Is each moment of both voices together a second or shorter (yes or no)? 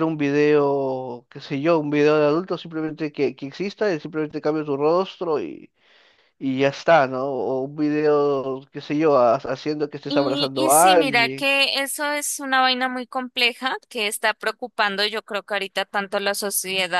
no